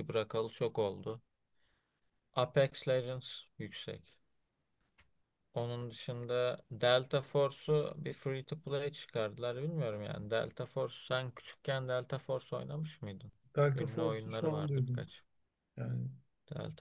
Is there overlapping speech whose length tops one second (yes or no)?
yes